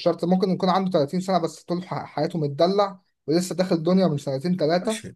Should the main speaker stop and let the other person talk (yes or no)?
yes